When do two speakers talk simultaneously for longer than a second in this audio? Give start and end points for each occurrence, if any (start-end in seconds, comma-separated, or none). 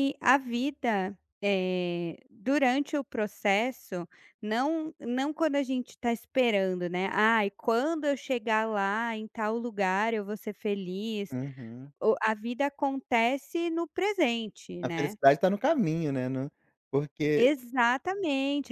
none